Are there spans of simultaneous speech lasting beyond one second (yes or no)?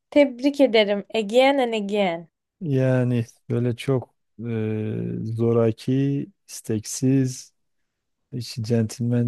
no